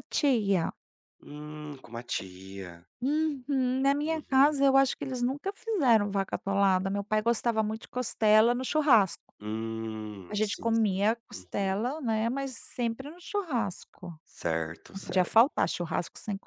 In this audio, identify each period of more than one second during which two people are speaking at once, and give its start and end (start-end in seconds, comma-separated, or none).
10.3-11.8